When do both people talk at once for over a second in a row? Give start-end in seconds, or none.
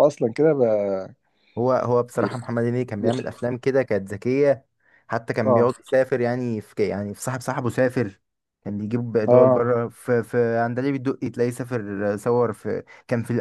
none